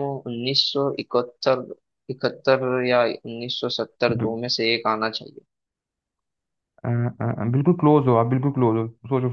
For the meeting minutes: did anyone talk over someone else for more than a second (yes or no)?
no